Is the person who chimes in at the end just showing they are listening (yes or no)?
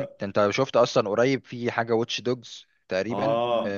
yes